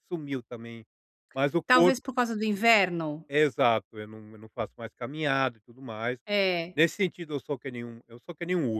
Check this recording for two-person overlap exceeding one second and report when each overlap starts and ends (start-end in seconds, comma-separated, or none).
none